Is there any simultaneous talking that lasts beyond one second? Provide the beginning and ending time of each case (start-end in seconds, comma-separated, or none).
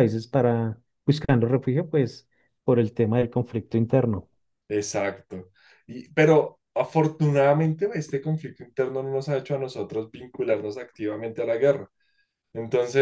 none